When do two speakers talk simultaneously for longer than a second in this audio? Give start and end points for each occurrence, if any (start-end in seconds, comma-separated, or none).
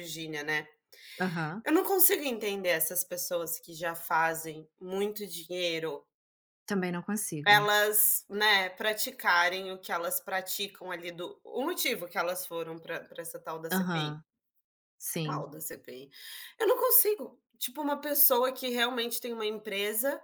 none